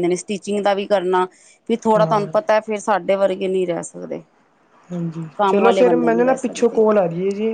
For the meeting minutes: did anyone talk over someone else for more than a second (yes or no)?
yes